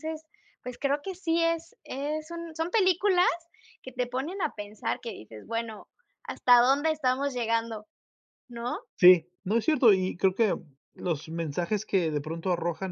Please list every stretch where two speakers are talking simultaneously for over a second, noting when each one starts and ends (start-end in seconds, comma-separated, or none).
none